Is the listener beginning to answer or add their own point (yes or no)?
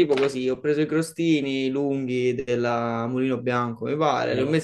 no